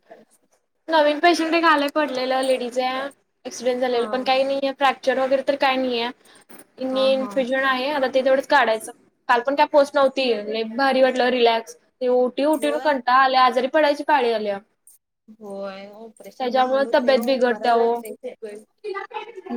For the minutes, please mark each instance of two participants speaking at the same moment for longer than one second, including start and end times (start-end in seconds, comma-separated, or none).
16.4-18.0